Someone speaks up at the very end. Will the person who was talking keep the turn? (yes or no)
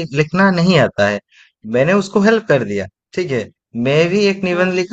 yes